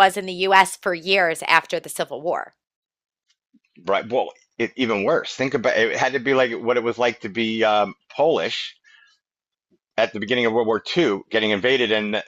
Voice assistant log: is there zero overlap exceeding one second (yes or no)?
yes